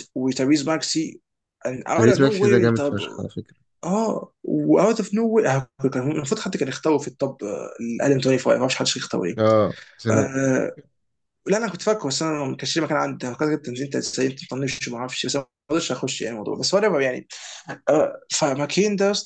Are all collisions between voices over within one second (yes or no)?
no